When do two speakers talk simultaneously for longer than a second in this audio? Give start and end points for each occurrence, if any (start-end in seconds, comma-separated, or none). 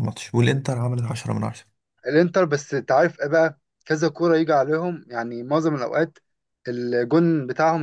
none